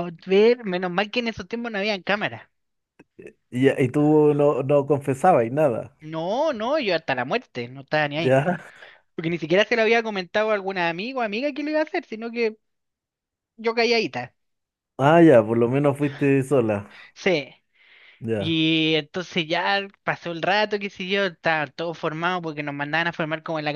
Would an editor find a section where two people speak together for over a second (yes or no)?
no